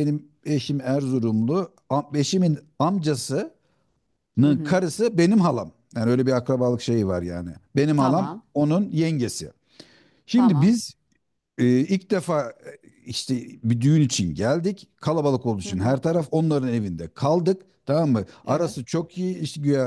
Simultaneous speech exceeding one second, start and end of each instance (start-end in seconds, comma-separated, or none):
none